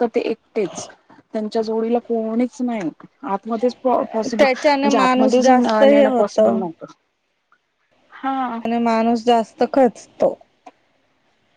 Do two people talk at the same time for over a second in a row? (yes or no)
yes